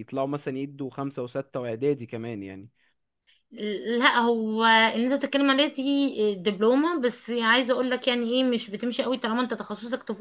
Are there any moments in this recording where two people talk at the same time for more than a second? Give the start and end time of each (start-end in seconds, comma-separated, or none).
none